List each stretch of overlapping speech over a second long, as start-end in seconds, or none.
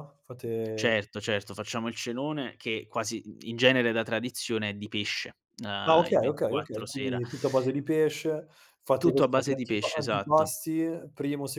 5.9-7.2, 9.0-10.6